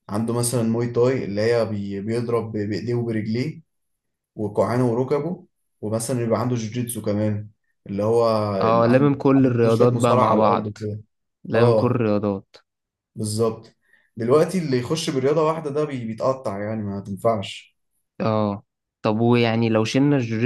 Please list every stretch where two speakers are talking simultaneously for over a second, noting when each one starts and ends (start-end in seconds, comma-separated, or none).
8.7-10.8